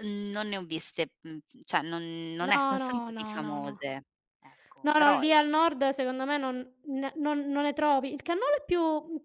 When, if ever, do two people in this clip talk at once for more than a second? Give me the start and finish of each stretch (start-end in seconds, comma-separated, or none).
2.4-3.8